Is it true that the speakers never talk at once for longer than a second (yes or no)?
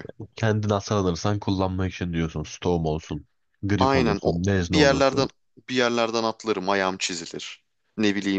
no